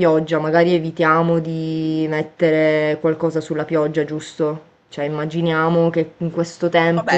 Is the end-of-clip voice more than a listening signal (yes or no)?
yes